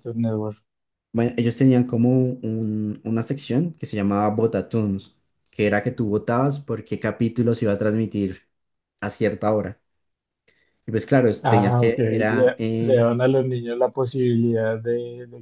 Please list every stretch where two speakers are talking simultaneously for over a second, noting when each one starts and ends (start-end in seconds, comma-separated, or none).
11.4-13.1